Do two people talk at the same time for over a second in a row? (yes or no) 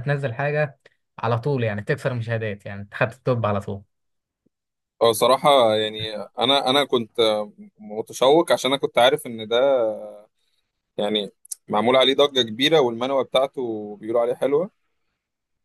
no